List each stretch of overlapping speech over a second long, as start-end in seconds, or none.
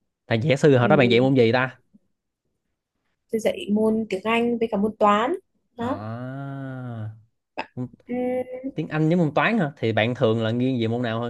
none